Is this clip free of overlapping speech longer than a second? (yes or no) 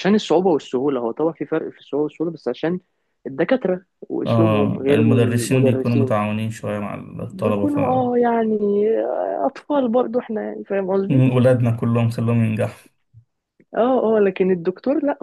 no